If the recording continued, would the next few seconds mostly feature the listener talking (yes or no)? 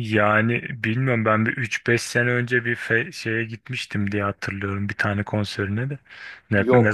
no